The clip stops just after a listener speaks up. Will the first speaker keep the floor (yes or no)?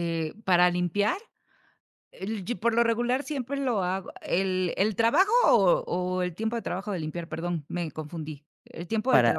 no